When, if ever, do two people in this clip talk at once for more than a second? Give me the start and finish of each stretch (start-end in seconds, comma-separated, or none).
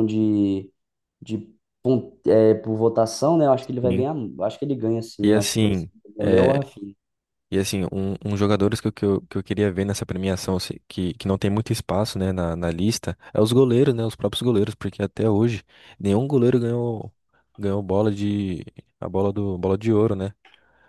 5.2-6.6